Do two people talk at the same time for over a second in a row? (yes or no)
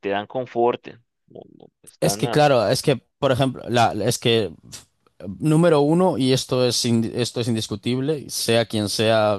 no